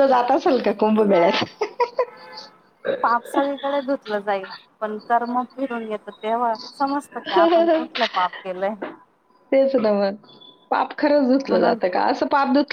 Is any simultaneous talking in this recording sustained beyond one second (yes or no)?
no